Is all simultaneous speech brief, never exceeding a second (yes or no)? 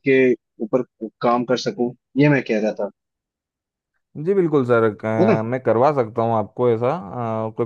yes